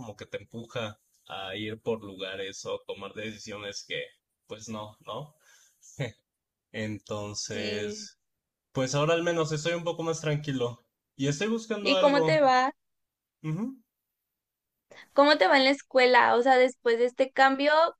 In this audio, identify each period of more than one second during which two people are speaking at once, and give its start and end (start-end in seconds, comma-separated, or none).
none